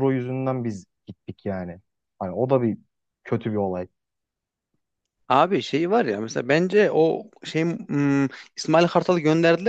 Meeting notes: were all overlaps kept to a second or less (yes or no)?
yes